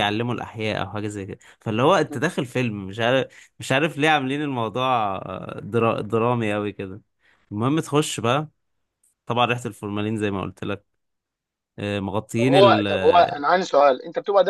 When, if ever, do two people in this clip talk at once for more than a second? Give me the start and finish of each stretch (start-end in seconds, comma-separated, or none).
none